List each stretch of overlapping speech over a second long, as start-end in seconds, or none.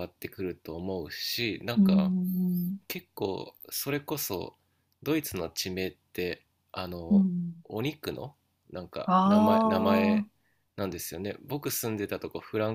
9.1-10.3